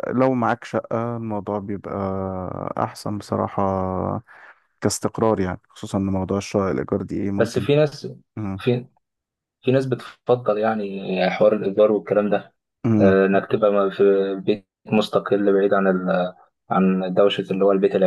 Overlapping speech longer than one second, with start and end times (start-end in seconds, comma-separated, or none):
none